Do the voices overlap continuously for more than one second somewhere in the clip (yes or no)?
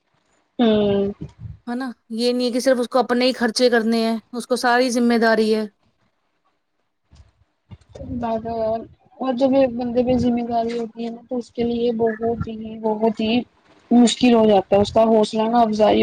no